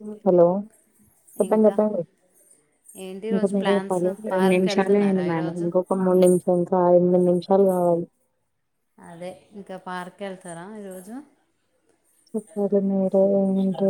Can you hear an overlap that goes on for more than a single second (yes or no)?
yes